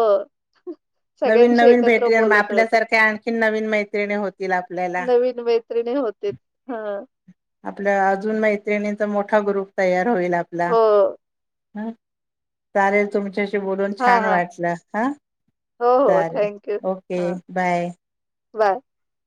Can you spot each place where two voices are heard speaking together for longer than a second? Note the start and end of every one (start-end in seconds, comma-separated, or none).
1.3-2.8